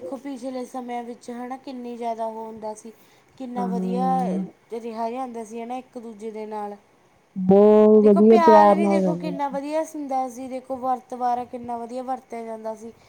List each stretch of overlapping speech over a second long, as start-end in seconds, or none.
8.0-9.6